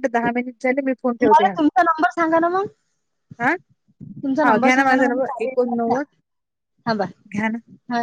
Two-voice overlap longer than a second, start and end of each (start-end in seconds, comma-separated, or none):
4.4-6.0